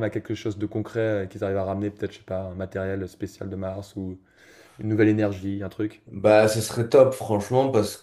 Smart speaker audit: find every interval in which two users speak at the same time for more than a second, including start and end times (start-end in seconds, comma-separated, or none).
none